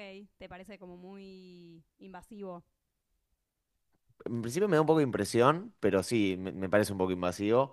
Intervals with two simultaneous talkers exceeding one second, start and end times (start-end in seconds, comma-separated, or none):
none